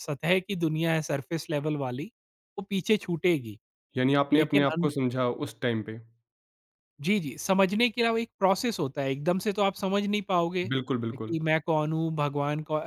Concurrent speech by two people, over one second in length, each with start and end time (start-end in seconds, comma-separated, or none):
none